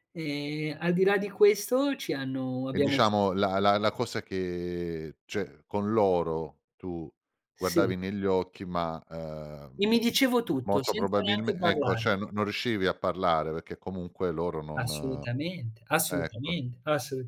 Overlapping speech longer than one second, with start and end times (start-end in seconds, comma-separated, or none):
10.6-12.1